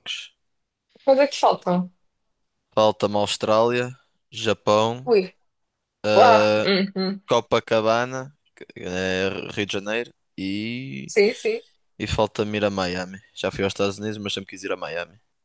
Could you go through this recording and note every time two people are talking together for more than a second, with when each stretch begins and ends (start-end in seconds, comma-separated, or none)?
none